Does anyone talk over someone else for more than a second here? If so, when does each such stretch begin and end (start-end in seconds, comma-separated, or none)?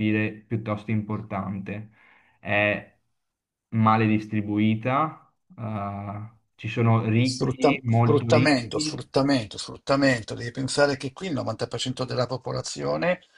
7.2-9.1